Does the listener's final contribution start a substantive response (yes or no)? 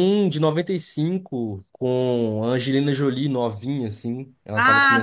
yes